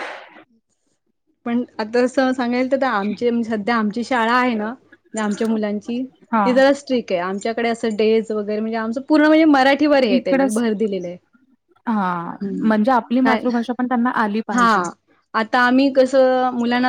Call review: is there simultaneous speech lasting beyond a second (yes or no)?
no